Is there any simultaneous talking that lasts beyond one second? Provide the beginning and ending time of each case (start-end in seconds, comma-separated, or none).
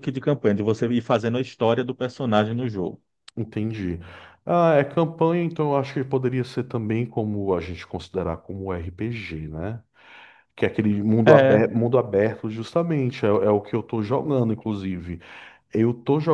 none